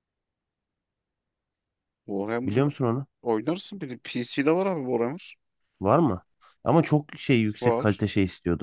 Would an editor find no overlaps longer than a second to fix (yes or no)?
yes